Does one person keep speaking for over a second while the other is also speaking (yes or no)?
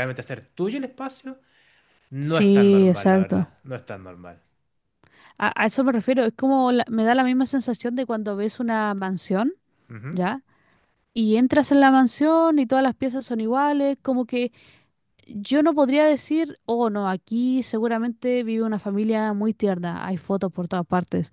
yes